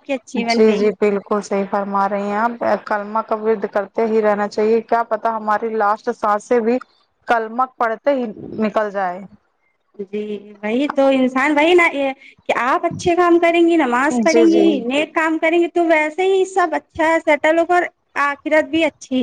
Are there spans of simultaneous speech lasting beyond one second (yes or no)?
no